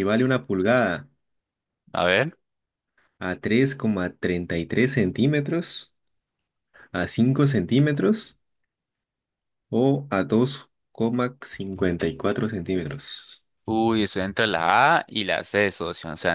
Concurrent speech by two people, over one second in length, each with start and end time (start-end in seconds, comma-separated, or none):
none